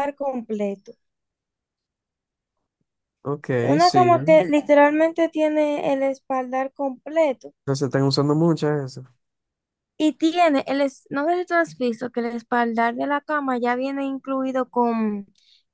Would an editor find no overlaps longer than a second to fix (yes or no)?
yes